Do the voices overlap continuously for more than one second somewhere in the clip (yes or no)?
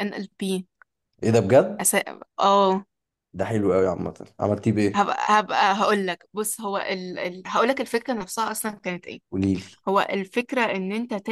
no